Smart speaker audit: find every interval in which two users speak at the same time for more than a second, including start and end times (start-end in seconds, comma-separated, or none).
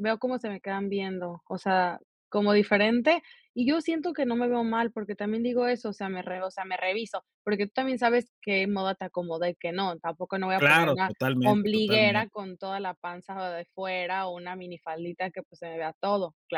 10.6-12.3